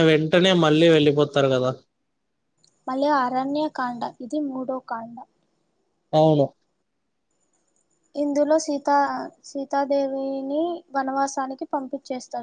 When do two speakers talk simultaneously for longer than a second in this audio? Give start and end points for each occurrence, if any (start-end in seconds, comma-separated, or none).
none